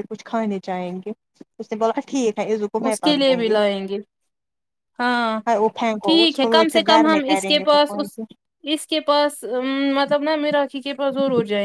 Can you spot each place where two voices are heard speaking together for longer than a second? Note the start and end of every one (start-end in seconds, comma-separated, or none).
6.1-7.8